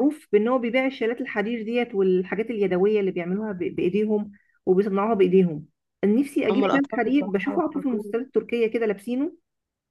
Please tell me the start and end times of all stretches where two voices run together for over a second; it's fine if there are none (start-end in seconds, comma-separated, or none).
6.5-8.2